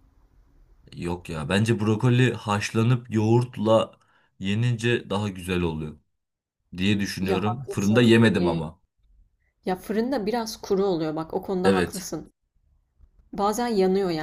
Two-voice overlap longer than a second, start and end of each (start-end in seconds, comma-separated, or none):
7.2-8.6